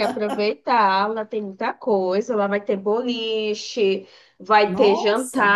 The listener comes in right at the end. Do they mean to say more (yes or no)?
no